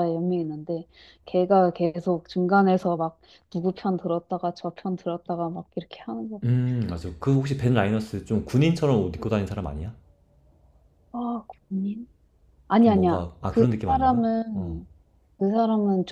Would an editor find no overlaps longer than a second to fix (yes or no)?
no